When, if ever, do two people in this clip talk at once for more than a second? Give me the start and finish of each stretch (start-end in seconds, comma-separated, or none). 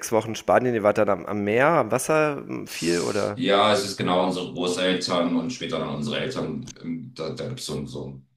none